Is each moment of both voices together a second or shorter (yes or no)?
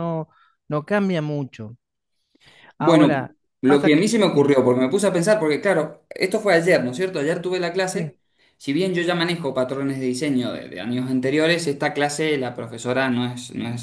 no